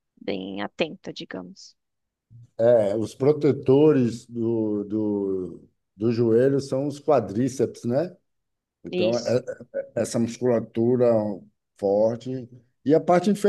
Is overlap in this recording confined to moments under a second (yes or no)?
yes